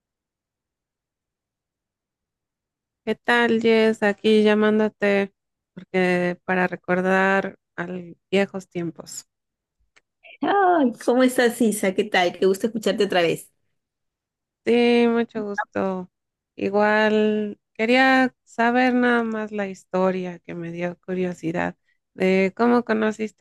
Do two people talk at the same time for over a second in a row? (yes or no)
no